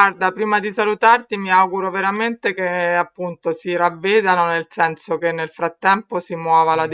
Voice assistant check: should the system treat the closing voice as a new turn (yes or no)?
no